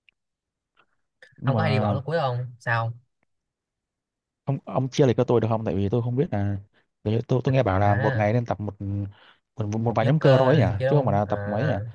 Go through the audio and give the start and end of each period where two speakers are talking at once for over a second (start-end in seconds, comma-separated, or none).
9.9-11.3